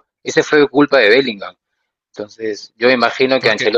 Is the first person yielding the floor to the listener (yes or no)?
no